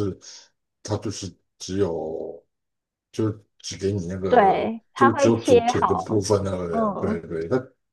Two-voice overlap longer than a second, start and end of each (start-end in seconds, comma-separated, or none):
4.3-6.1